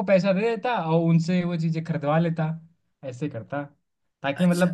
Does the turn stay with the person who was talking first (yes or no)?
yes